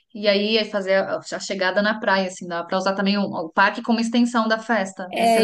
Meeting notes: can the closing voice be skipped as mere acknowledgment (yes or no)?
no